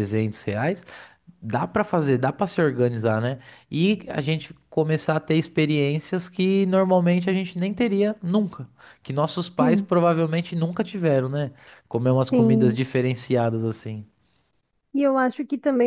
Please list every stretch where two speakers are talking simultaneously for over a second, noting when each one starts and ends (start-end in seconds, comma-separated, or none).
none